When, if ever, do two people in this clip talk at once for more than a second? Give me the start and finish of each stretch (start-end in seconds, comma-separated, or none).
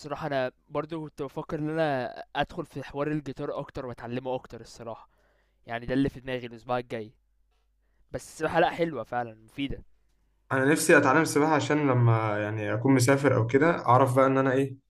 none